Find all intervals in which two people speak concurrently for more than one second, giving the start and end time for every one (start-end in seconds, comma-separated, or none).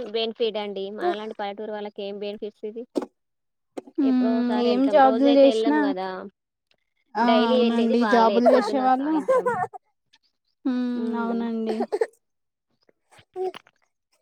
7.3-9.1